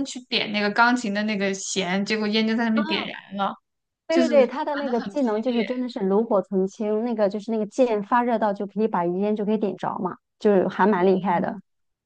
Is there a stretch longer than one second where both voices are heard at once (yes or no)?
yes